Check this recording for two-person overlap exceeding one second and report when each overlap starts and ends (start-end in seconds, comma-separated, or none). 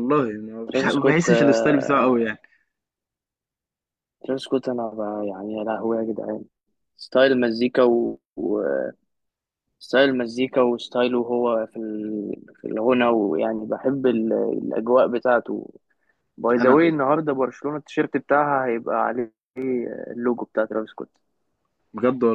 0.7-2.3